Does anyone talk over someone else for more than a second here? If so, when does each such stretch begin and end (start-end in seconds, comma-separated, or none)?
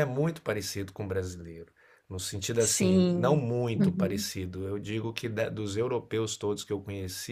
2.6-4.3